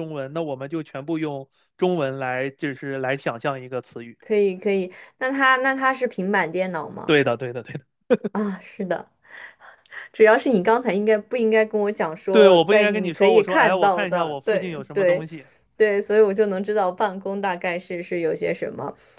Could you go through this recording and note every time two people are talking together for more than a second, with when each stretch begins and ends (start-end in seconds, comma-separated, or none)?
12.3-15.2